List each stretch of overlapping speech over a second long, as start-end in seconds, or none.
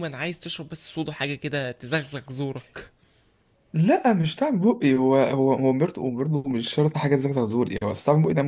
none